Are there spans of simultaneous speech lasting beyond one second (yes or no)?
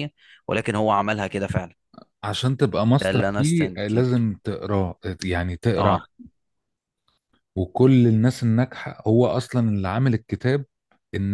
yes